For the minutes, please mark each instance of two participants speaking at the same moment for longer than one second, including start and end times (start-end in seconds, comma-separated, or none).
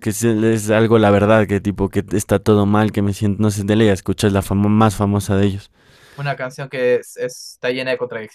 none